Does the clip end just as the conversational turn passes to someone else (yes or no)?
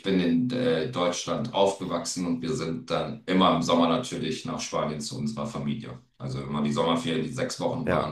no